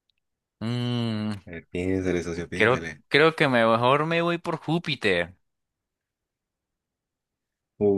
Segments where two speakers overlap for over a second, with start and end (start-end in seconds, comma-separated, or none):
none